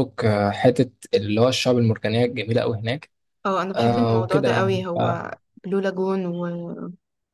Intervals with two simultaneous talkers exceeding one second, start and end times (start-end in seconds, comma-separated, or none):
3.7-5.3